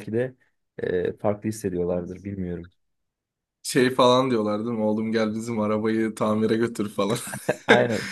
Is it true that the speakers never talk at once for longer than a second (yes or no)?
yes